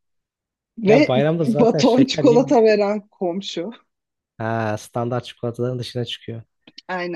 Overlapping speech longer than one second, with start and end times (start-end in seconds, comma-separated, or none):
0.9-2.4